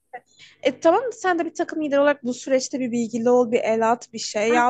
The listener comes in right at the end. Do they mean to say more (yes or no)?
yes